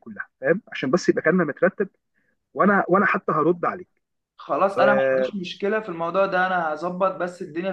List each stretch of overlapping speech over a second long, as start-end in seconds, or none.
none